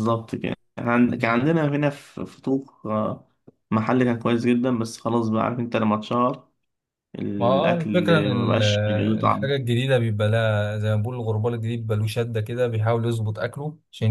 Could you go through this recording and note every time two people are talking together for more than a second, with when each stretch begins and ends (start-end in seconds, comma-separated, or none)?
7.4-8.6